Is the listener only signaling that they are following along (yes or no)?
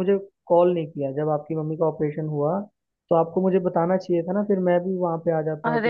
no